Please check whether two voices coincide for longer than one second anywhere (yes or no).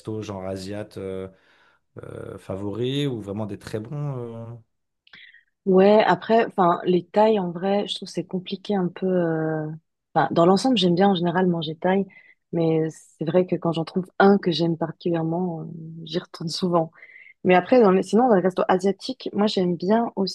no